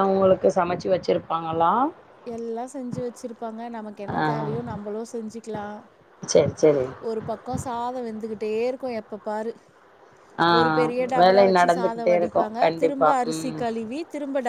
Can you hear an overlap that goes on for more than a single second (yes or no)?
yes